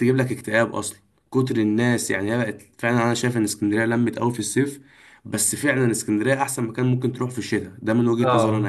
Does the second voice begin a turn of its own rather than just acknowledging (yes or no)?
yes